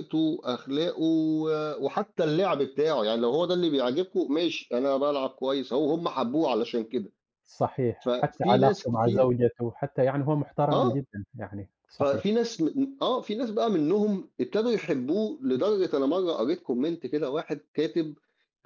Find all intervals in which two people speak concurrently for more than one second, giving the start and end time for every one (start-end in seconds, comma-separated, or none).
8.0-9.3